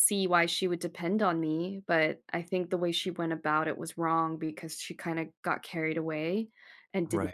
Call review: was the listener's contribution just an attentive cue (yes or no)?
yes